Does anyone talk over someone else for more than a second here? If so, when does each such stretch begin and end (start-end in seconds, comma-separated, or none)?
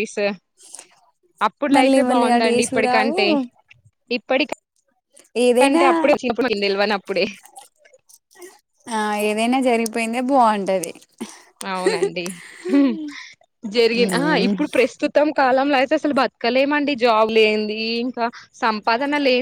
1.8-3.2